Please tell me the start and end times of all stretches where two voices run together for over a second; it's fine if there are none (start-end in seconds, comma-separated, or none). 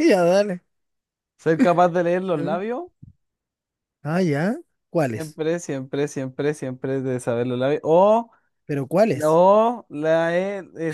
none